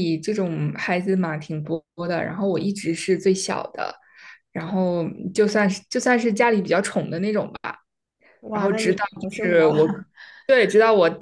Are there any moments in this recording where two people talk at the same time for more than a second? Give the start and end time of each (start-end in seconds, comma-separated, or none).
8.5-9.9